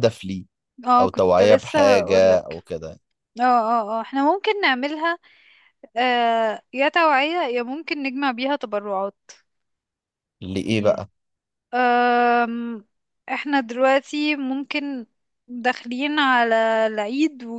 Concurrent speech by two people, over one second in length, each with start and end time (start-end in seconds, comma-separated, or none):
1.0-2.6